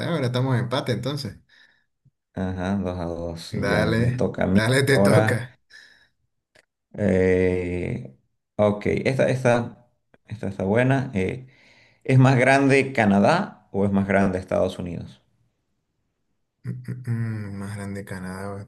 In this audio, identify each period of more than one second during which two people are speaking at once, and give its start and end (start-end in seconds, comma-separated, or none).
3.6-5.4